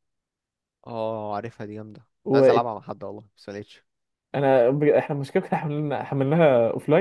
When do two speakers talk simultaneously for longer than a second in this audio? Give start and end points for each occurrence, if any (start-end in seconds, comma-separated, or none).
none